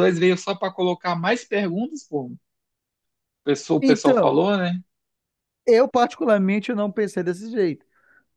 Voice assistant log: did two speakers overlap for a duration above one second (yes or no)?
no